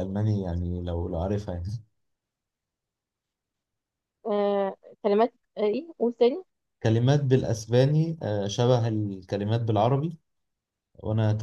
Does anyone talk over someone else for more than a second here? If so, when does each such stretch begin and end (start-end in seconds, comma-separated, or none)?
none